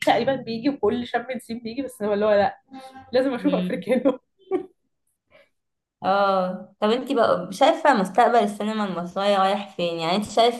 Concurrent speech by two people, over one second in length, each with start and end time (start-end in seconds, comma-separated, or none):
none